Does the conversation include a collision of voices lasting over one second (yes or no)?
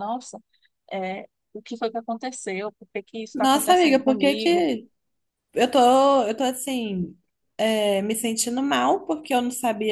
yes